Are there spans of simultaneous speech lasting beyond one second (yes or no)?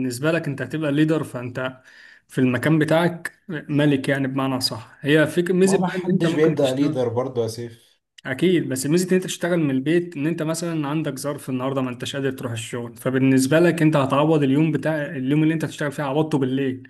yes